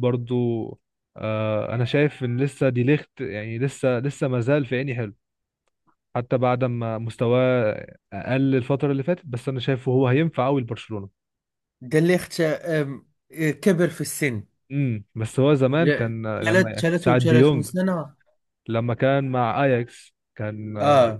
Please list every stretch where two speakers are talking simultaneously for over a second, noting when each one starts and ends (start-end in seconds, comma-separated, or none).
15.8-17.7